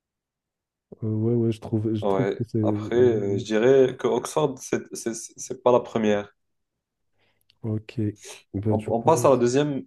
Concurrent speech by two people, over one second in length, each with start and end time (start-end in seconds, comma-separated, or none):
2.0-3.4